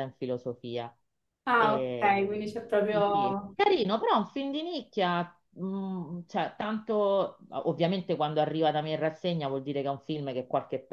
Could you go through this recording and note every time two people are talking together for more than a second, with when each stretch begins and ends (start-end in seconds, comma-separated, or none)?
1.5-3.5